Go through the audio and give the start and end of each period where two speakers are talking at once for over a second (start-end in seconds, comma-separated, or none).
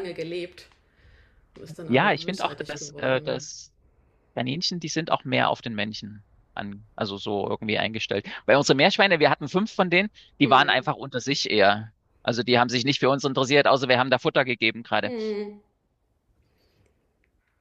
1.9-3.5